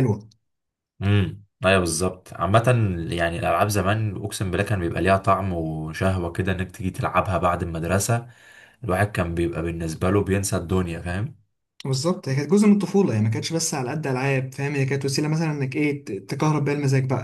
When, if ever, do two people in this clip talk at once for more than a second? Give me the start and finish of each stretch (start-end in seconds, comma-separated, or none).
none